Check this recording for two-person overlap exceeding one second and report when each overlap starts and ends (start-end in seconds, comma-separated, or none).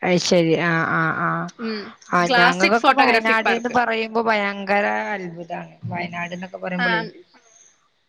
2.3-3.8